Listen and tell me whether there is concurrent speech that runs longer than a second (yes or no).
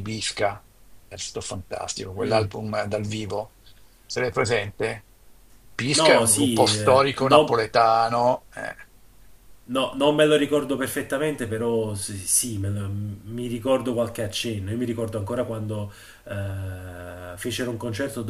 yes